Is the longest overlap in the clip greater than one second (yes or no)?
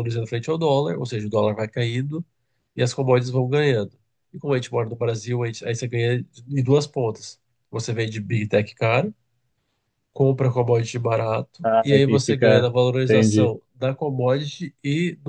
yes